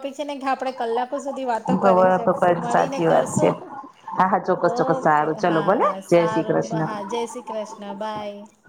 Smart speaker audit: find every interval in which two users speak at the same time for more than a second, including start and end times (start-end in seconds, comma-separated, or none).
1.7-3.5, 4.8-6.9